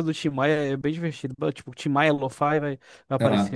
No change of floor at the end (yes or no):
no